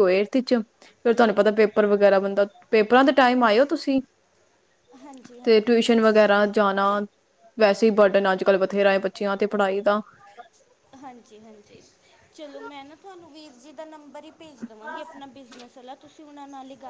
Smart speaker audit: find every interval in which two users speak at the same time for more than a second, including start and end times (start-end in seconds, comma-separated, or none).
none